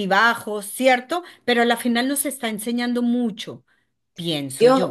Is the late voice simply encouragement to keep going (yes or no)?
no